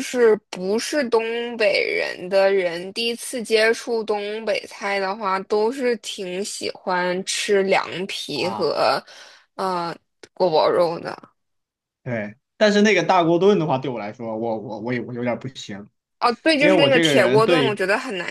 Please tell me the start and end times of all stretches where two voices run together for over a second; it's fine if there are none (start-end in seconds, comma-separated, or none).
16.6-17.8